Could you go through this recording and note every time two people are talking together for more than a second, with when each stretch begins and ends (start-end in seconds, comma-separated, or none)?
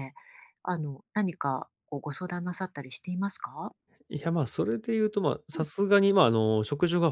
none